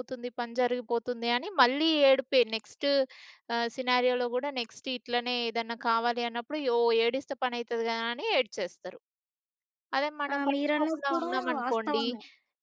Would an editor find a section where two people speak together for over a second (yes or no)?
yes